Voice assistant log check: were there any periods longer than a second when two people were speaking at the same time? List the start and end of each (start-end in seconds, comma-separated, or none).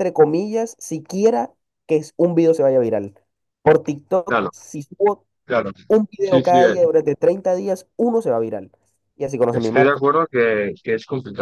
none